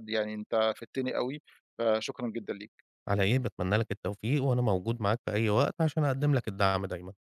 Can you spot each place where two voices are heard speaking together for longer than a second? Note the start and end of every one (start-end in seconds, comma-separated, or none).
none